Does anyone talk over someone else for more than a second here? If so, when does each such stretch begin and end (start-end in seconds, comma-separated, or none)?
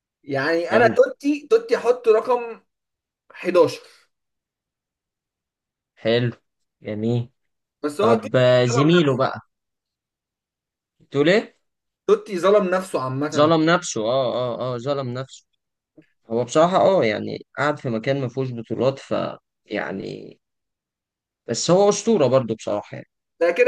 8.0-9.3